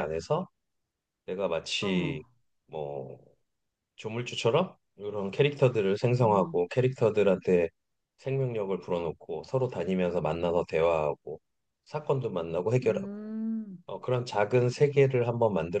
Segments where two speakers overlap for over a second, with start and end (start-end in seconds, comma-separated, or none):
none